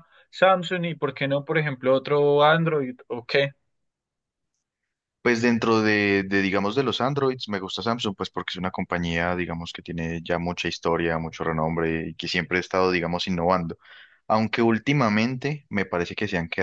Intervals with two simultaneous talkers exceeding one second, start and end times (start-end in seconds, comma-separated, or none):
none